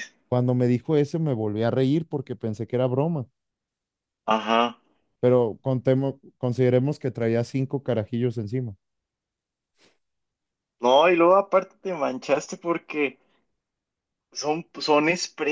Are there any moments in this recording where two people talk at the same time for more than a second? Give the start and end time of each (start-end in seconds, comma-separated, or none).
none